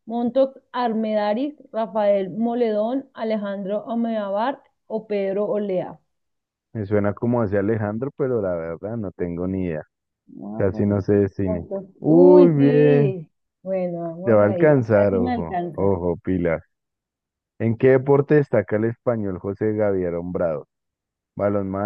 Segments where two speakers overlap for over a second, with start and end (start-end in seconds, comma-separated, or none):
10.6-13.2, 14.2-15.9